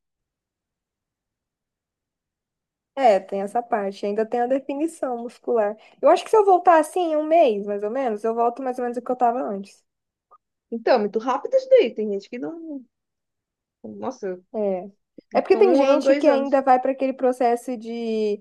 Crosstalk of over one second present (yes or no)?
yes